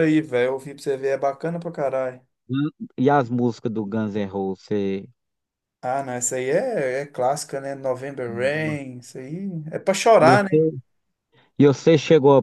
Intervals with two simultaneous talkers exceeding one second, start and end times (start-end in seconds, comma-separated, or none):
none